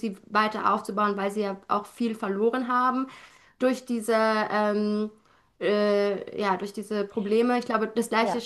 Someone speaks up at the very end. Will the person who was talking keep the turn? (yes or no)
yes